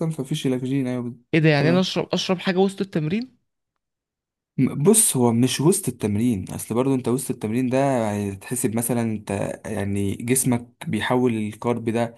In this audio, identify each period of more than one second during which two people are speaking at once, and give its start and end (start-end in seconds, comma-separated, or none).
none